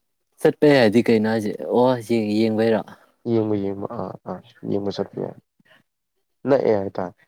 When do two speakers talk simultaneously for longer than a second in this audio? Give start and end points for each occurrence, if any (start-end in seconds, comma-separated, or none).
none